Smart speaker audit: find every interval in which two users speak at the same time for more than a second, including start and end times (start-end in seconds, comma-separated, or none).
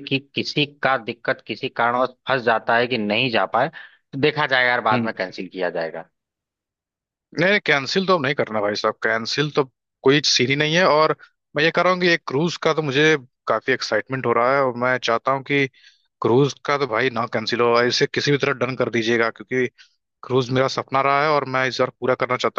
none